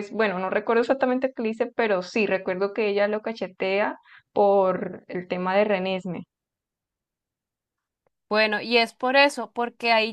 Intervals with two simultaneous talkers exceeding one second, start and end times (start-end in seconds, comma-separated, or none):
none